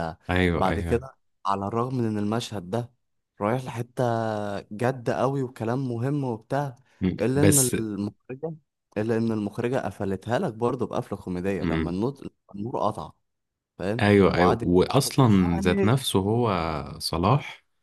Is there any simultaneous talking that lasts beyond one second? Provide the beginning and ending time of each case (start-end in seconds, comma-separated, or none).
14.0-16.0